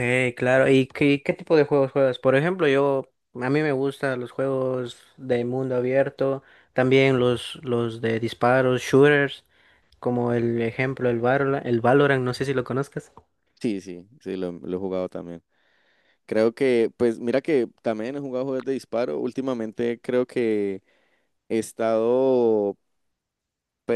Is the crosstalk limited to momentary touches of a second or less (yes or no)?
yes